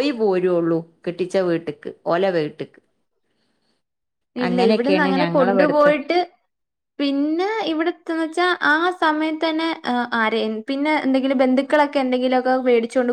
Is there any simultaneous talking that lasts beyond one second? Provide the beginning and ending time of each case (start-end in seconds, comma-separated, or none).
4.5-5.9